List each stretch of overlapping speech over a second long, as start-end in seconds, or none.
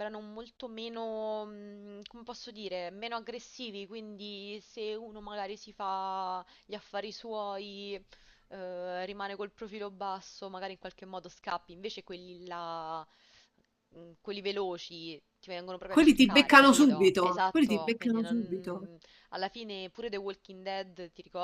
15.8-18.9